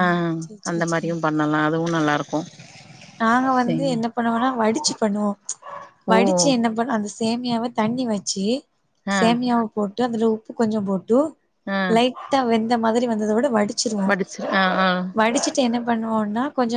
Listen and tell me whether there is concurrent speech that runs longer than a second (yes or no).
no